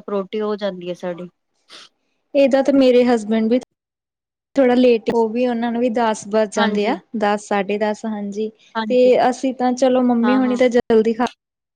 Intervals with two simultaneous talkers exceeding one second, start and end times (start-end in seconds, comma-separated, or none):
none